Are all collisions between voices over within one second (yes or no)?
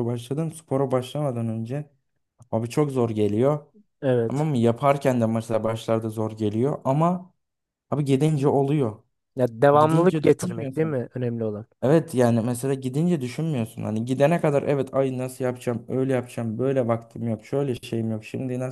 no